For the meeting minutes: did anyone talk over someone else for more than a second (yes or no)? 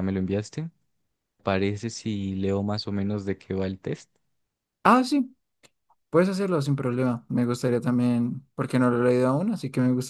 no